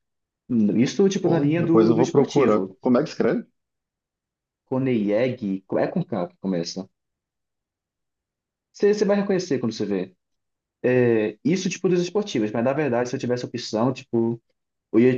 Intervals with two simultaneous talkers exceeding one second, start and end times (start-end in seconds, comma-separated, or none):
1.2-2.8